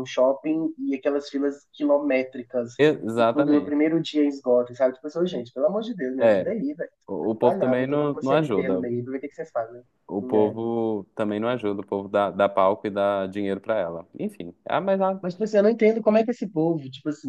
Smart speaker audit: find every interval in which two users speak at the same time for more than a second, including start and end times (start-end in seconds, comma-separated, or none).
7.4-8.8